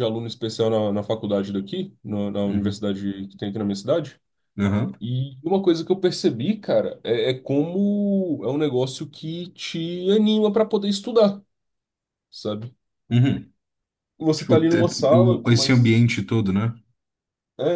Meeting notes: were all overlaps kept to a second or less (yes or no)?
no